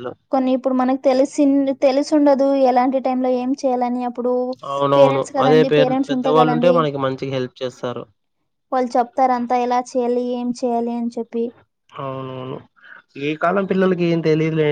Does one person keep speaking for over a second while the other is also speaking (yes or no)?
yes